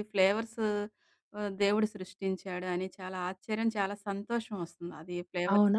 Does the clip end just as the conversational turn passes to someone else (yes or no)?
yes